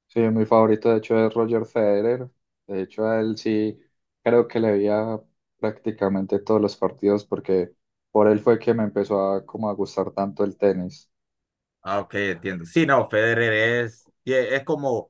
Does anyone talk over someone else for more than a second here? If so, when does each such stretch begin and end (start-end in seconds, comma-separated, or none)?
none